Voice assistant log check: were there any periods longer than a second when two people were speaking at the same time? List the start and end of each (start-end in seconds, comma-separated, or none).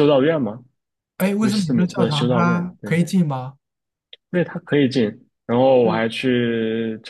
1.4-3.0